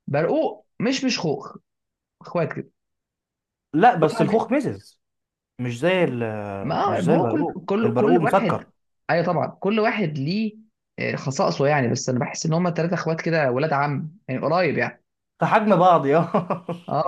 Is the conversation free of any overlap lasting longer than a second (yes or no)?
no